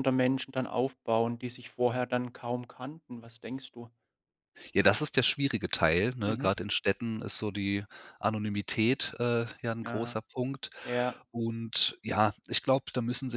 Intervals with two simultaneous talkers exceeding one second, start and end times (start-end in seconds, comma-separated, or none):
none